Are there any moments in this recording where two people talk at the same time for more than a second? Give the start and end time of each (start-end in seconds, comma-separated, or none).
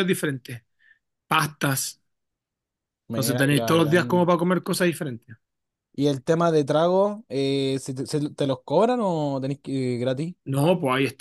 3.1-4.3